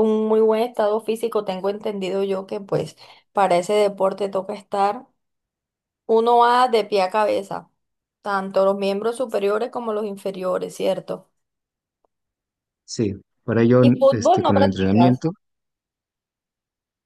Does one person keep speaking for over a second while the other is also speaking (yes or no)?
yes